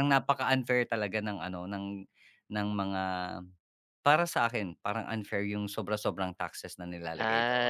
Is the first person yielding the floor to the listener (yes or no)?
yes